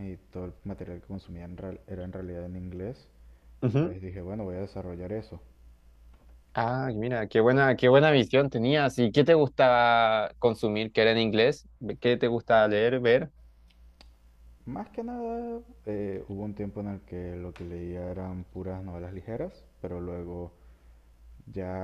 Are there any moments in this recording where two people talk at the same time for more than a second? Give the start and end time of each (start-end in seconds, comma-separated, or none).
none